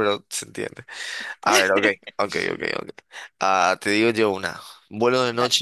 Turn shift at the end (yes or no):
no